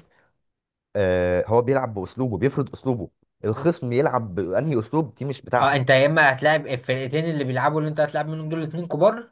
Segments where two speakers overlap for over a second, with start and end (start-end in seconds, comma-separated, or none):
none